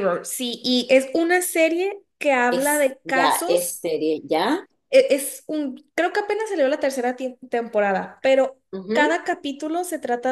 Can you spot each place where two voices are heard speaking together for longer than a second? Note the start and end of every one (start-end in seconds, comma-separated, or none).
2.5-3.8